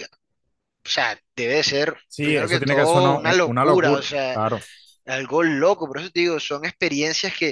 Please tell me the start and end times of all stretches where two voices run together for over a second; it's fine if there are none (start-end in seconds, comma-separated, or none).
2.1-4.4